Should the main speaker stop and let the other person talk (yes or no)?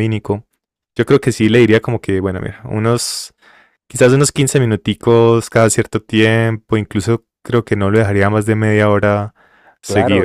yes